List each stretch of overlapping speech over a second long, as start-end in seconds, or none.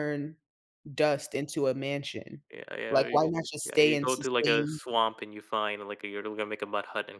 2.9-4.8